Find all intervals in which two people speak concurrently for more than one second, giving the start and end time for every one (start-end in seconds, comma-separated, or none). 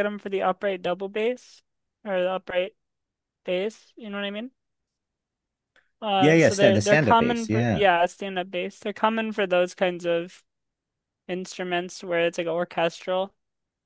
6.2-7.8